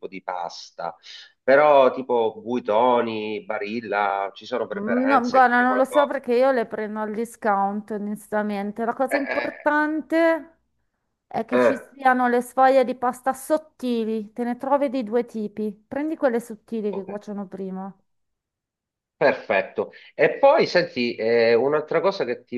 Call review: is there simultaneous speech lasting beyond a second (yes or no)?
yes